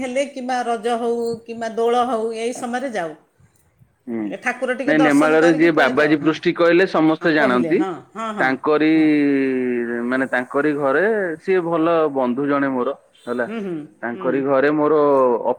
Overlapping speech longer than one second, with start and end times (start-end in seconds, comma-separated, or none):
4.9-6.3